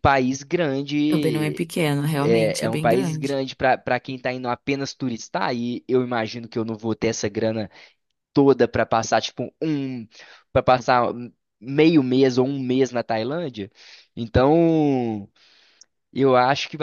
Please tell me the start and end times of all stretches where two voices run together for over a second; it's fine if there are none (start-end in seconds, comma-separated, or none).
2.2-3.4